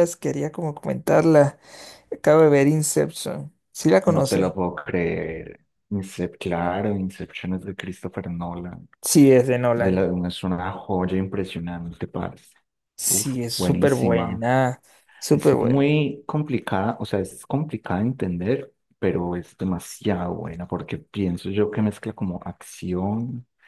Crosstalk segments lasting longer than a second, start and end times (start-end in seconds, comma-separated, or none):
13.1-14.4